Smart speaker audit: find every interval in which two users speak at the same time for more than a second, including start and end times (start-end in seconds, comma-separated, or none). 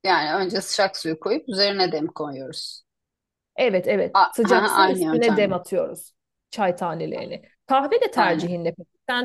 4.1-5.6